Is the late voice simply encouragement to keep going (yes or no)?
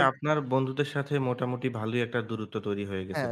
no